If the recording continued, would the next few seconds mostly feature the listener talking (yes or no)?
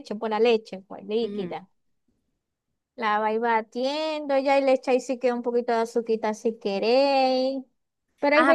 yes